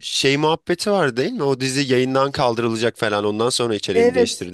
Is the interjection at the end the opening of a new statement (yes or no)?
yes